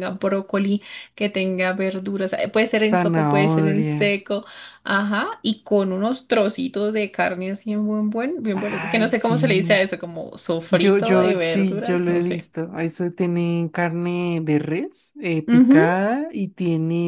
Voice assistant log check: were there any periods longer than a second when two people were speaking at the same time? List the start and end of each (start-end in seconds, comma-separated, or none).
2.9-4.1, 8.5-9.9, 10.7-12.5